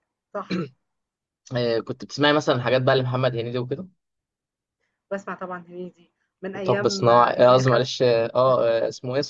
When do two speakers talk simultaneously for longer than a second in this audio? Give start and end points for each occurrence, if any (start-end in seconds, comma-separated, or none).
6.6-8.0